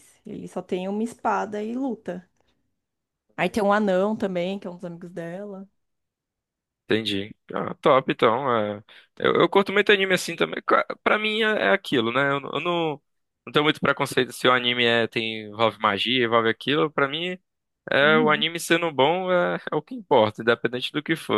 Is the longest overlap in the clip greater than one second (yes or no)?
no